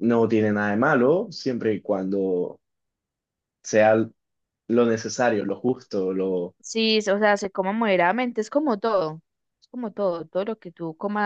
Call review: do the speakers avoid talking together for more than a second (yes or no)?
yes